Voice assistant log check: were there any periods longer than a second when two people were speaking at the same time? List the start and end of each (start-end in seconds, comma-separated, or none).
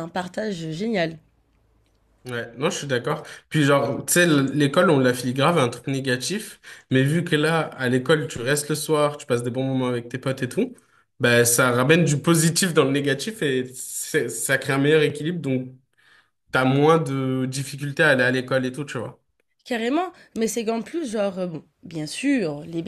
none